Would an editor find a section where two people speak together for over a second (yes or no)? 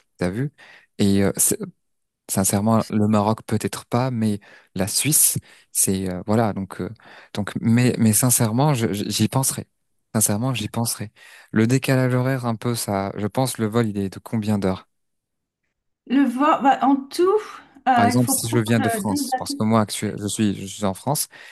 yes